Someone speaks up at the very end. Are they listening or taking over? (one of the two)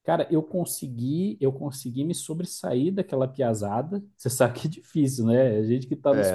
taking over